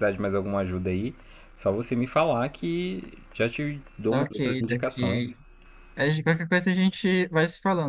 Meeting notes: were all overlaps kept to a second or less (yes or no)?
no